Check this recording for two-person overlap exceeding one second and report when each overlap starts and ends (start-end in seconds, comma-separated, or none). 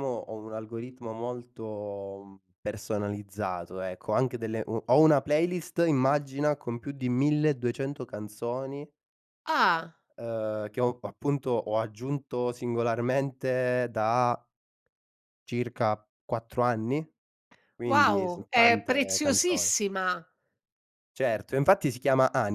17.9-19.7